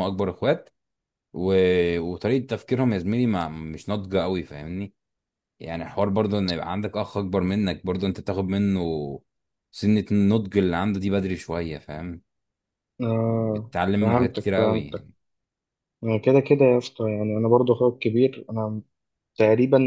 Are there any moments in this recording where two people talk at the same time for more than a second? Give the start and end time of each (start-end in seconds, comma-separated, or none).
13.3-15.1